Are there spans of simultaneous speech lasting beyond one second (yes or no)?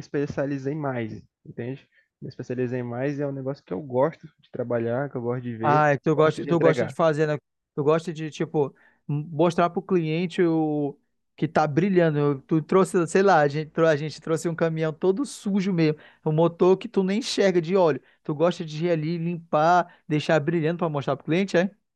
yes